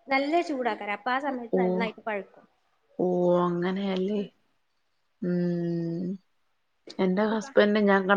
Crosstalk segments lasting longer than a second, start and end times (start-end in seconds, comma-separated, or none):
none